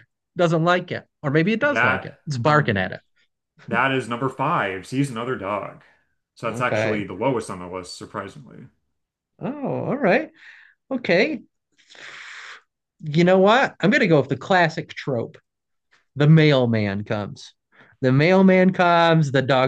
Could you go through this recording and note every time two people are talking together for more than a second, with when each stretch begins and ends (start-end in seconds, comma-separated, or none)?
1.6-3.0